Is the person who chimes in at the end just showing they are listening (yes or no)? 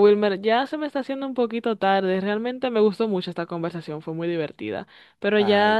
yes